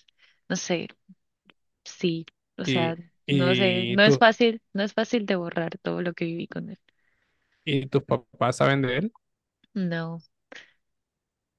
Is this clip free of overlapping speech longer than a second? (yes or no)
no